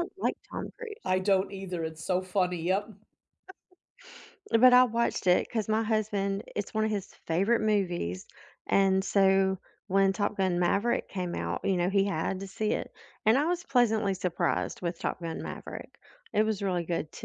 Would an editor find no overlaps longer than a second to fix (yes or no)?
yes